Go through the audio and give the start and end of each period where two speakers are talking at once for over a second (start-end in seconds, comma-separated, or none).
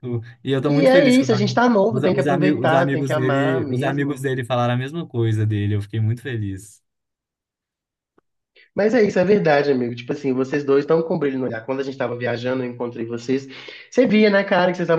0.6-4.2